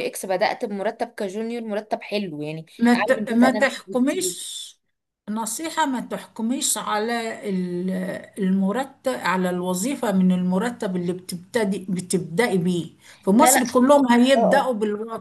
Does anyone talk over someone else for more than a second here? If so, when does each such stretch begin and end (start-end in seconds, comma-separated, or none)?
2.8-4.3